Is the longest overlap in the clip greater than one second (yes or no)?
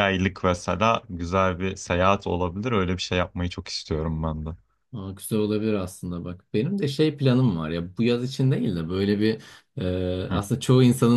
no